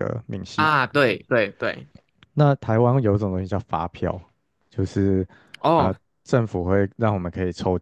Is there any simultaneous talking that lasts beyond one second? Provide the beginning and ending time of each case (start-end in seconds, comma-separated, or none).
none